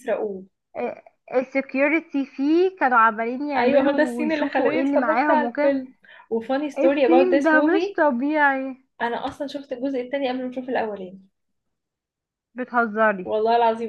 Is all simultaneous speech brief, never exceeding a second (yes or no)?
no